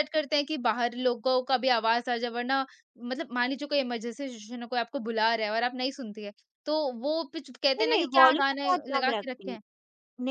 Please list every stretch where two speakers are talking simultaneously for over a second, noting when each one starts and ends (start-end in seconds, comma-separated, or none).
7.8-9.6